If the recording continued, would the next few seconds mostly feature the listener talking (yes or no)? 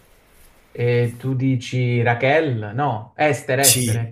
yes